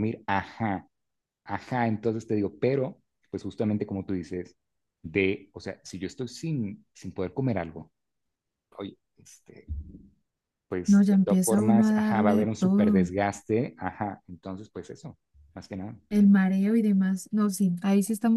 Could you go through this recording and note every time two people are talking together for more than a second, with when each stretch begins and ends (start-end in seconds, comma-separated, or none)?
10.8-13.1